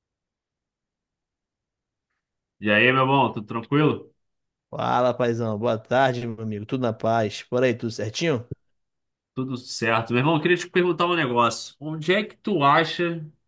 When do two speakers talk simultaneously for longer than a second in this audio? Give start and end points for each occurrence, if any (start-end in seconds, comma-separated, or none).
none